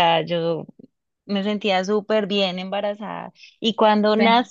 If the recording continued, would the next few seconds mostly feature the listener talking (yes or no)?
no